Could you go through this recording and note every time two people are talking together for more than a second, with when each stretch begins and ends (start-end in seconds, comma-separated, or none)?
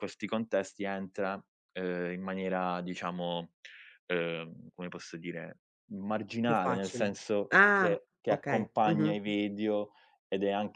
6.5-9.2